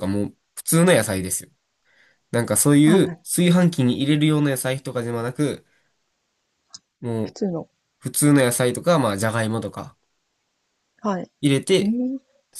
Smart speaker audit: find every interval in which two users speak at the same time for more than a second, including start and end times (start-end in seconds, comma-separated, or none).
none